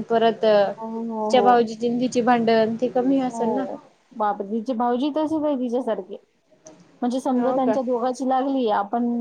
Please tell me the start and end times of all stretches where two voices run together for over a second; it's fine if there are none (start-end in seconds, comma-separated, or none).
none